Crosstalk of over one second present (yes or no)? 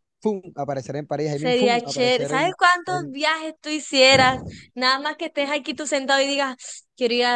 yes